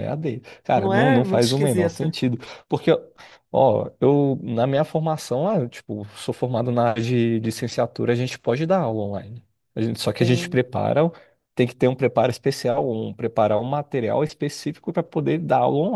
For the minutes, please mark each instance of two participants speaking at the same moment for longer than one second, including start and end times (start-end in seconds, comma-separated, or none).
0.8-2.1